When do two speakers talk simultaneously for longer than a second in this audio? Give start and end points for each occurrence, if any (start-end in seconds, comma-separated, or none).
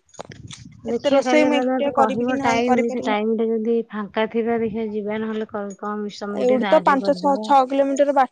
0.9-3.1